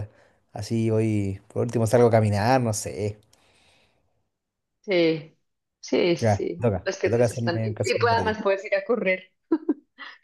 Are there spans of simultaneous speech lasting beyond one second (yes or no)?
yes